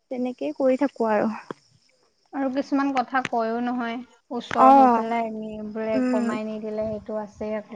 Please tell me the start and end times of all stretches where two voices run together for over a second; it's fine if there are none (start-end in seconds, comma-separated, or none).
none